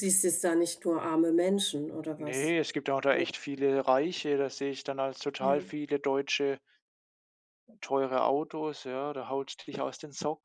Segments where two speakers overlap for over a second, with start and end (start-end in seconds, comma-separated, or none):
none